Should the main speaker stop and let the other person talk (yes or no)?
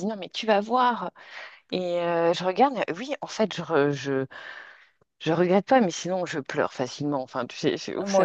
no